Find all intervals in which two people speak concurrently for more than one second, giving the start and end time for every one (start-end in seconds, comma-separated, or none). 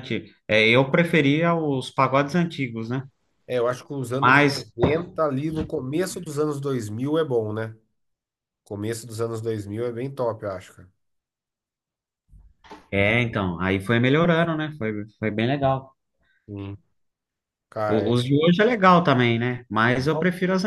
none